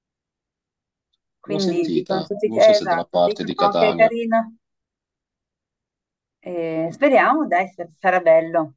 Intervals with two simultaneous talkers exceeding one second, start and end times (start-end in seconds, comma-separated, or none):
1.5-4.1